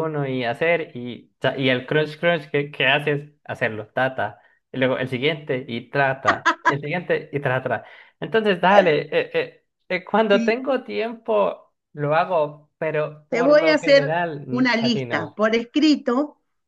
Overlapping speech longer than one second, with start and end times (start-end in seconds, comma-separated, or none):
13.3-15.4